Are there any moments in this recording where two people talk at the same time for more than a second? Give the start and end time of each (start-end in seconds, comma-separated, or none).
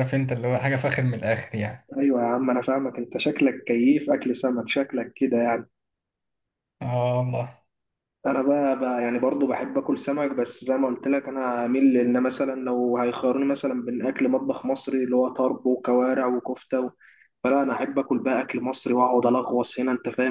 none